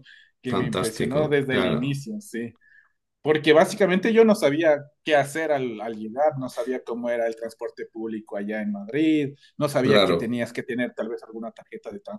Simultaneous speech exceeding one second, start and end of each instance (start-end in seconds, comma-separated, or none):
0.5-2.0